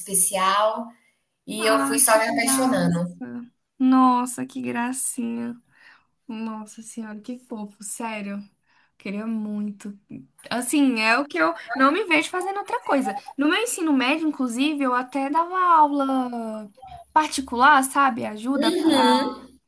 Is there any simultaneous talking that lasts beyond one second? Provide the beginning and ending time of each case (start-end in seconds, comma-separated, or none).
1.6-3.2